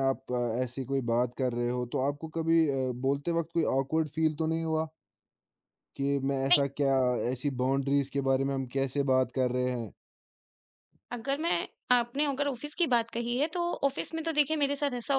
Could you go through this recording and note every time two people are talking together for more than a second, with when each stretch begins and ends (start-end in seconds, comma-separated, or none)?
none